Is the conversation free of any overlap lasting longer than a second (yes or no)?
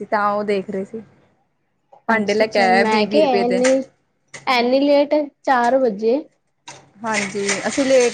no